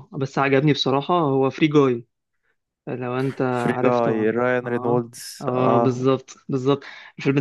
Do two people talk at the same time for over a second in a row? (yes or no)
yes